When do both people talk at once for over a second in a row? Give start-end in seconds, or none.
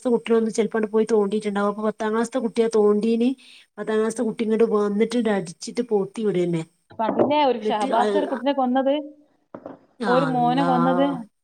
none